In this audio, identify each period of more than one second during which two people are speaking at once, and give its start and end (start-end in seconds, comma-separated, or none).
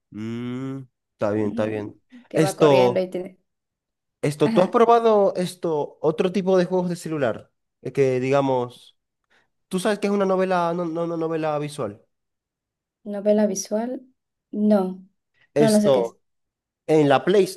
1.3-3.1